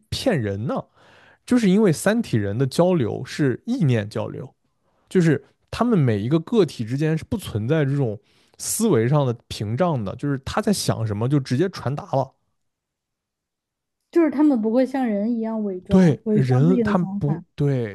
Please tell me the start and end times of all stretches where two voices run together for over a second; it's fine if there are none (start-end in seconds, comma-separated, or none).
15.9-17.4